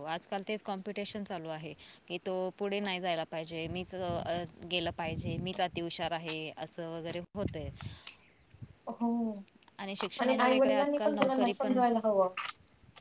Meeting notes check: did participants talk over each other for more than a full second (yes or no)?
yes